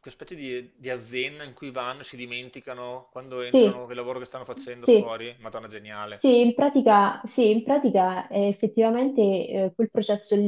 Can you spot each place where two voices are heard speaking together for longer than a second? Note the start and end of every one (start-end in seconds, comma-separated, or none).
none